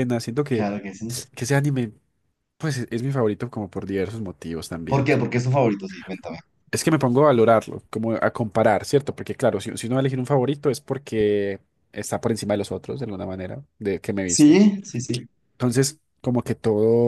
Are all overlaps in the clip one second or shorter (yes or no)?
yes